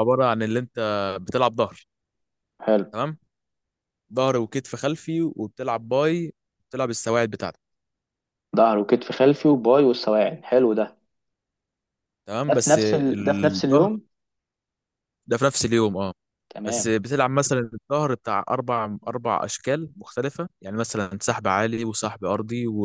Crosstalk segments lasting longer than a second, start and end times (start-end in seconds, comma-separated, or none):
12.5-13.9